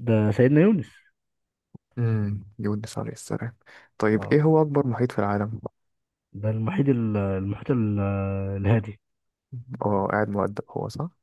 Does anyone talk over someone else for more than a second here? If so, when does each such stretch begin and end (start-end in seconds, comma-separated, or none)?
none